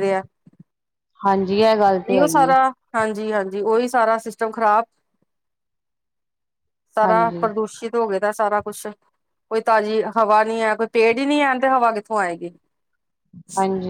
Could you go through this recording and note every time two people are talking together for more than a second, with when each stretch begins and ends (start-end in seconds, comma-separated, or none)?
none